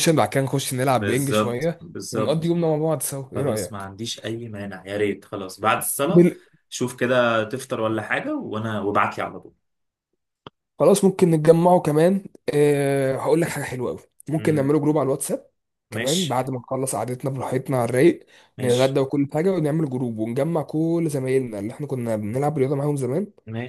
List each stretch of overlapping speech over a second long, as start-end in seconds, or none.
0.9-2.5